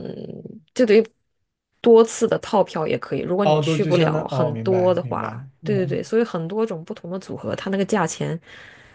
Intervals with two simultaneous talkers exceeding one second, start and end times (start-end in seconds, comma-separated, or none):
3.4-6.0